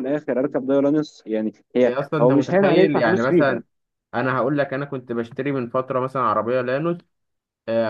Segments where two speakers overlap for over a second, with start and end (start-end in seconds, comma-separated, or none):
1.8-3.6